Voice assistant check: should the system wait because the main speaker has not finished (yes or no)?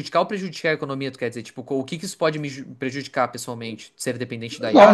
no